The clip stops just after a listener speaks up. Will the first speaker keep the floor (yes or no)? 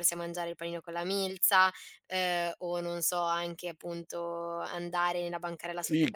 no